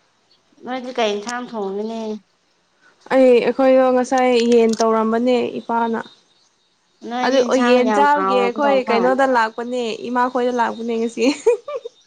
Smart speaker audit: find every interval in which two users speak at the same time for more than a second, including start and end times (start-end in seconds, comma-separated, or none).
7.2-9.2